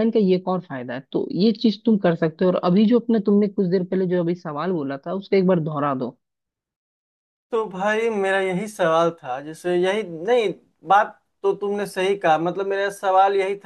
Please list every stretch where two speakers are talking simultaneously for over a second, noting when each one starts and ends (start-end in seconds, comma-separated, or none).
none